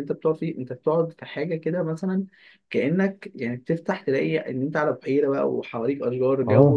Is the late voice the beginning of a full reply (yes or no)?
no